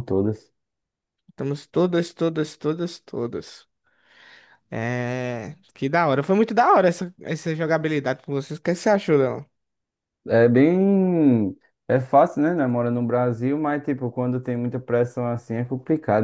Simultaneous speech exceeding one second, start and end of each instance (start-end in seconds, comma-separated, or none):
none